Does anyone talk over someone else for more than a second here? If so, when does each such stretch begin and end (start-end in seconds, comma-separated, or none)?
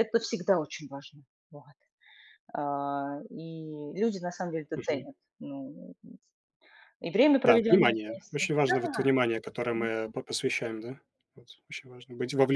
7.4-9.0